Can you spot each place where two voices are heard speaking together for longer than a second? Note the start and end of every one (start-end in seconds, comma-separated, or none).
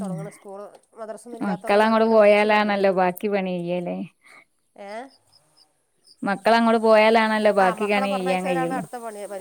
1.5-2.8